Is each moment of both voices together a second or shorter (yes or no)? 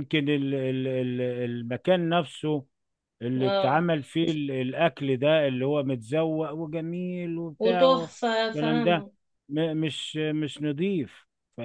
no